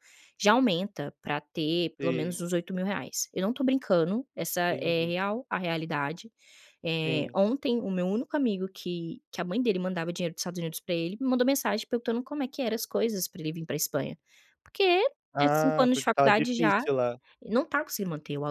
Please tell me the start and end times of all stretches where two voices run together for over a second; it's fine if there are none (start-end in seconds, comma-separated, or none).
15.3-16.8